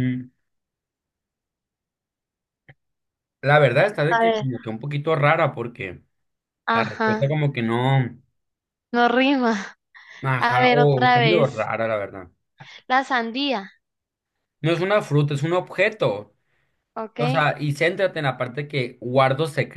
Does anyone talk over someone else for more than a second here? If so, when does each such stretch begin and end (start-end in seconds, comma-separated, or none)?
10.4-11.7